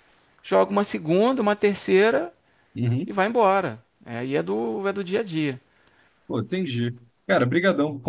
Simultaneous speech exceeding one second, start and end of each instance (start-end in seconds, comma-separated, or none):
none